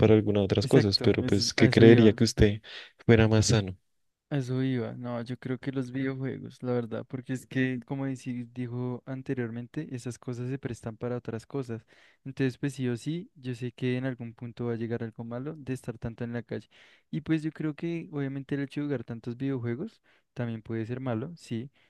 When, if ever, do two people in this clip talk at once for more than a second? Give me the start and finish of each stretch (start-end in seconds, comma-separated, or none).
0.6-2.2